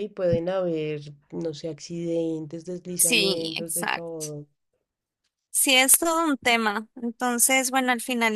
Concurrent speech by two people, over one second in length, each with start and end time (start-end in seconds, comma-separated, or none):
3.0-4.2